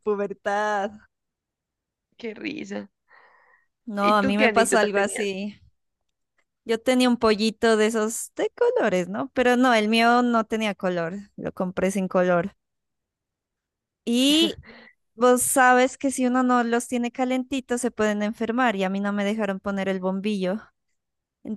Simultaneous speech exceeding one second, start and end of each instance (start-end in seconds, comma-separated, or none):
4.0-5.4